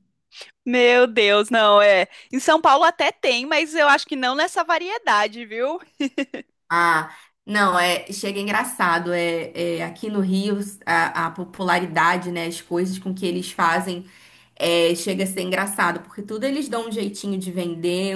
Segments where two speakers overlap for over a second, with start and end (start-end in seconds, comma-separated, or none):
none